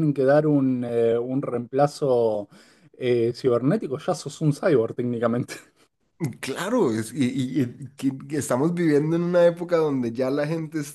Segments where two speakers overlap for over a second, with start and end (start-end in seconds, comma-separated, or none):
none